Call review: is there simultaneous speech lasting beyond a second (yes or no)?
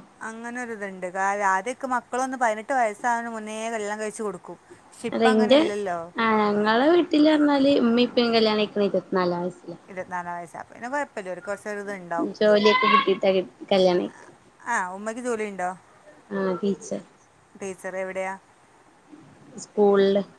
no